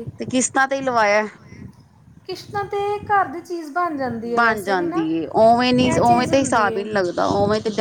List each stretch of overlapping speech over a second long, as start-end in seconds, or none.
5.6-6.8